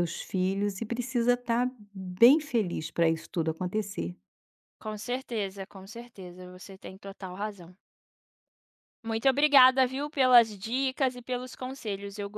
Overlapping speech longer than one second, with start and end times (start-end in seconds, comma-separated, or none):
none